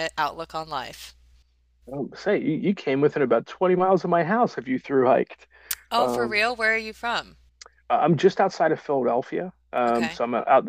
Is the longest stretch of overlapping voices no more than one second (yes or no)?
yes